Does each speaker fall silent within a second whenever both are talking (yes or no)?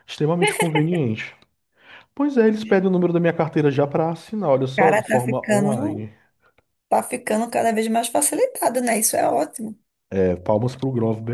no